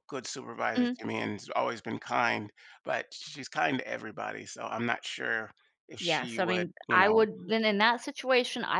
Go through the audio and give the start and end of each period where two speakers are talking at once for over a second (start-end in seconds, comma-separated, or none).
6.0-7.3